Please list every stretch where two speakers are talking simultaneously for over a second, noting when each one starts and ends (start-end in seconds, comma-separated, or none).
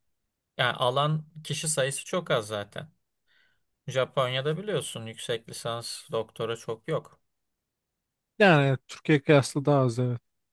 none